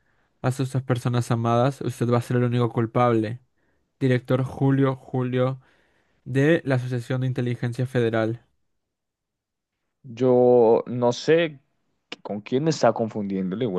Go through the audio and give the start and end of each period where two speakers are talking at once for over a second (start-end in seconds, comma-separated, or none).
none